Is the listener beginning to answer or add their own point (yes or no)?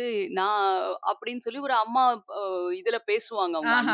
yes